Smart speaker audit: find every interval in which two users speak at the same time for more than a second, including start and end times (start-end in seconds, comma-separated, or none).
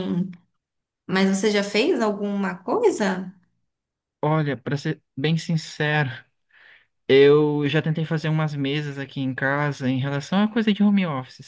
none